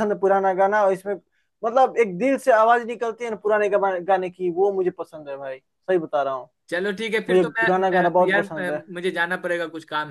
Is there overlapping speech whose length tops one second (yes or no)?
yes